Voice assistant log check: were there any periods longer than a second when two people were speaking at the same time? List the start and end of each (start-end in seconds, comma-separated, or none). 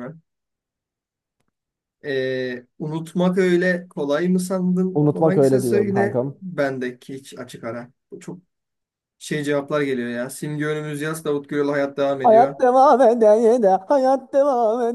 5.0-6.4